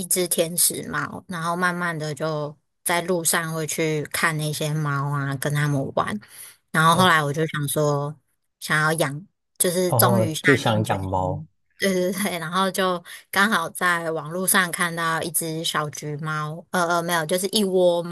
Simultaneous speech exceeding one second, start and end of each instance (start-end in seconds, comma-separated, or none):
9.9-11.4